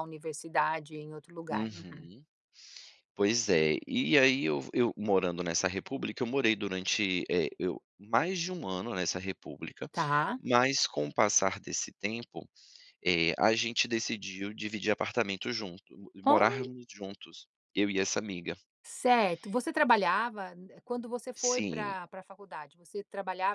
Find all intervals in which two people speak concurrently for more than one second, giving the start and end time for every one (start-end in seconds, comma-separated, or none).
none